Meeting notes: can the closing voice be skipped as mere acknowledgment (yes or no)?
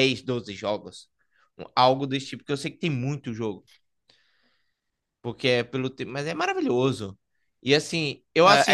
no